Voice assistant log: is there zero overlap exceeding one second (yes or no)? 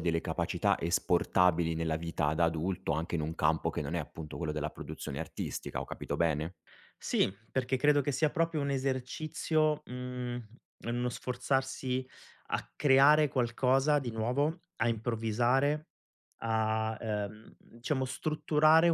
yes